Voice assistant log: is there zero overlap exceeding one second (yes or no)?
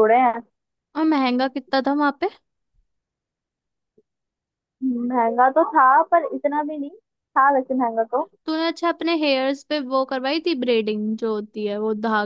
yes